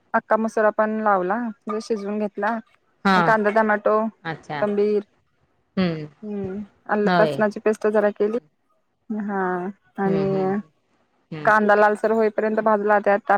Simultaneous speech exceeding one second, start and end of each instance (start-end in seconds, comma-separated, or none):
none